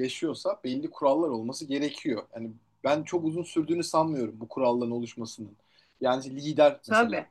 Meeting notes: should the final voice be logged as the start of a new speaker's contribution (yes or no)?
no